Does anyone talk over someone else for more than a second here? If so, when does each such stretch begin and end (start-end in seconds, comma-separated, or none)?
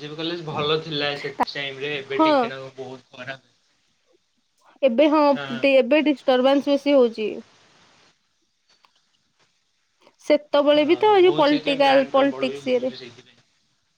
10.7-12.9